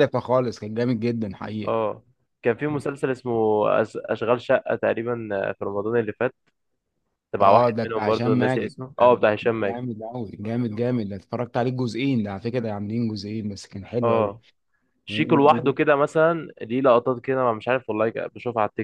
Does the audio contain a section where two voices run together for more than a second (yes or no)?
yes